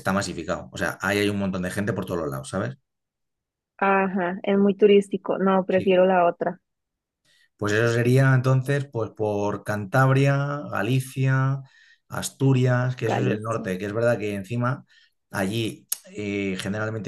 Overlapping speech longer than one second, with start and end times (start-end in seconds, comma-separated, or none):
none